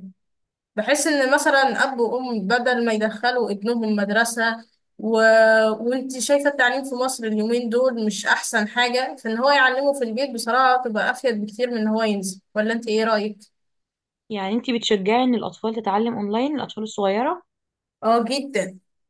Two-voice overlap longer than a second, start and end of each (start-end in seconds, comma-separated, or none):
none